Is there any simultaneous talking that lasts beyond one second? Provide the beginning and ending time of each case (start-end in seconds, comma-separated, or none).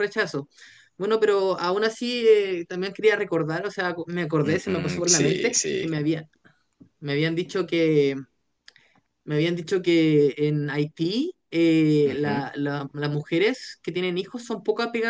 4.4-5.8